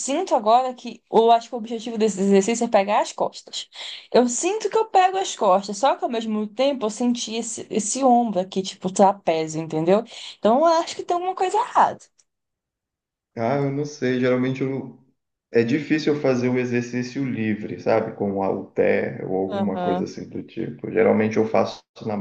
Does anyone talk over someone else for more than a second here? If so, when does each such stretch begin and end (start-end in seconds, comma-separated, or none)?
none